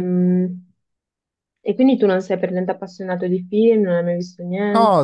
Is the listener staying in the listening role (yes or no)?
no